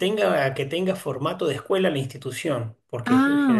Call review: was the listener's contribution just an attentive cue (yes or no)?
yes